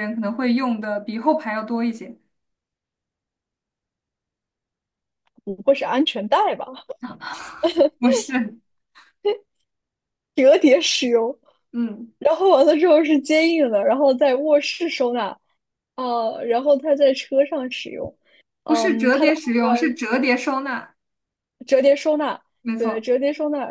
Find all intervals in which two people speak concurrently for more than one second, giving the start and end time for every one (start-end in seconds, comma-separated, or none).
18.7-20.0